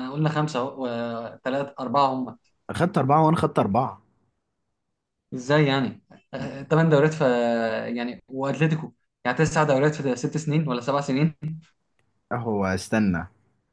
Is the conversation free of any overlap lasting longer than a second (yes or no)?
yes